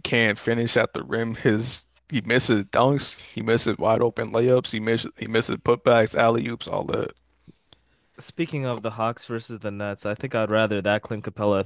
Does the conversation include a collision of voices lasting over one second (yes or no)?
no